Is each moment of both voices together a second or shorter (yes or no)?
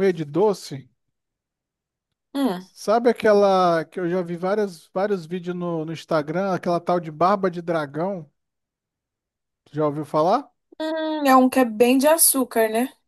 yes